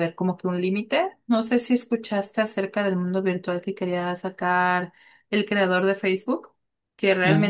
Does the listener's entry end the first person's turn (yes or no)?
no